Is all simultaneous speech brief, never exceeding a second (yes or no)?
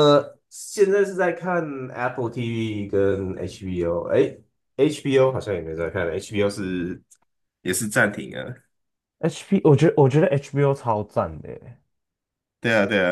yes